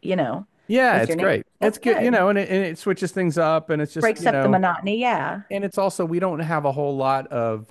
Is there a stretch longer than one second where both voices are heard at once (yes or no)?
yes